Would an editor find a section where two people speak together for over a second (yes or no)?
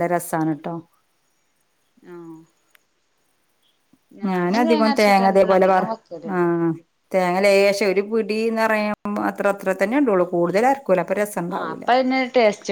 yes